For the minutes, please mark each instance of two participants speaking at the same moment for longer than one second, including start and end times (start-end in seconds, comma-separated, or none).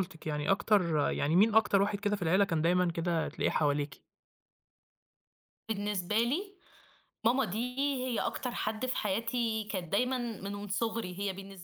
none